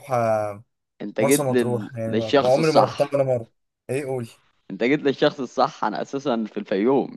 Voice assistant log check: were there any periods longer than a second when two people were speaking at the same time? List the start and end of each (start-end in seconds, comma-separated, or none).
1.2-3.2